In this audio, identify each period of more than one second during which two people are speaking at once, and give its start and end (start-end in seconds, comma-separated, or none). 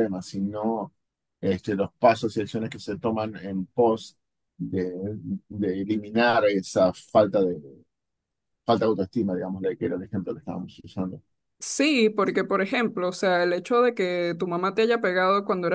none